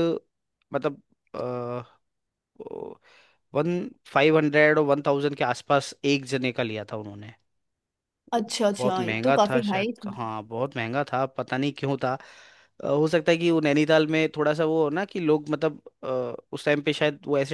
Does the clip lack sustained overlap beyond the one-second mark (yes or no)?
no